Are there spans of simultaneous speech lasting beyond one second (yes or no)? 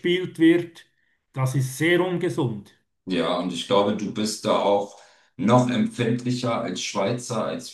no